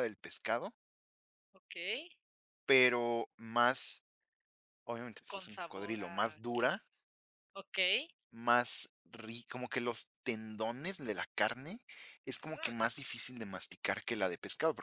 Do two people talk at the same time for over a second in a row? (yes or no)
yes